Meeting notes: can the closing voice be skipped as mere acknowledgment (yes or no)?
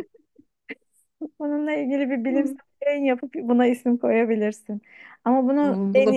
yes